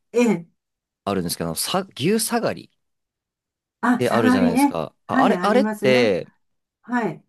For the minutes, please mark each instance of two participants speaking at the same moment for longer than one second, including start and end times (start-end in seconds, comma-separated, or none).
4.0-6.2